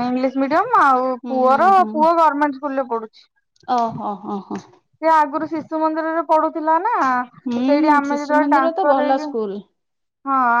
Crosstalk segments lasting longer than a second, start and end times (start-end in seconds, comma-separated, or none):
7.5-9.3